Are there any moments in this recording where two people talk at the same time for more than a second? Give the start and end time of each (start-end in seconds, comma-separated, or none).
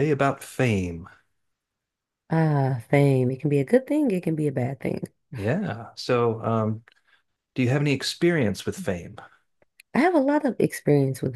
none